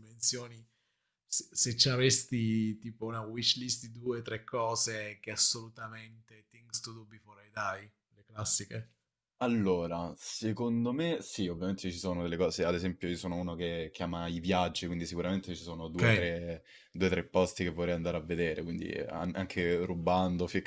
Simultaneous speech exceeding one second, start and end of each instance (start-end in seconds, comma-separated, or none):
none